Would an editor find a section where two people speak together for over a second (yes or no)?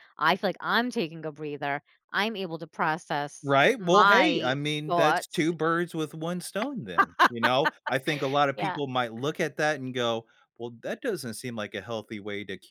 yes